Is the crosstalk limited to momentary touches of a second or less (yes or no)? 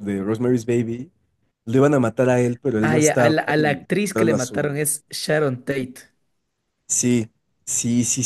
no